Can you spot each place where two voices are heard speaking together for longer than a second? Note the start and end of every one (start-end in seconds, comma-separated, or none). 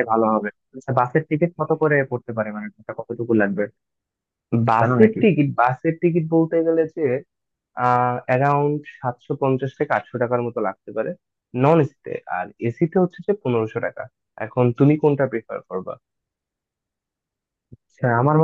none